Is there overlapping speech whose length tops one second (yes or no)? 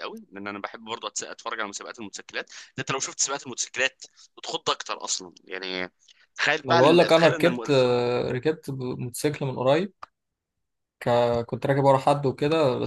yes